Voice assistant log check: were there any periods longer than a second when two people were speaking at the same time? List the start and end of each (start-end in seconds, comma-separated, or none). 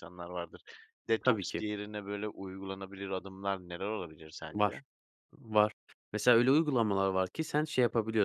none